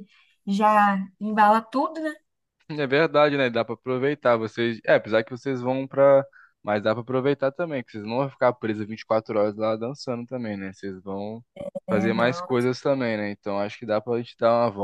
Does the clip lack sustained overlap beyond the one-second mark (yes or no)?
yes